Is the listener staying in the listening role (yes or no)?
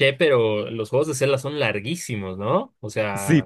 no